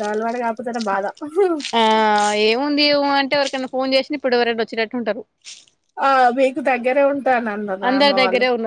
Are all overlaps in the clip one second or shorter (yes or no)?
yes